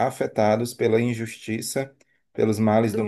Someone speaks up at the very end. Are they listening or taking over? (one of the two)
listening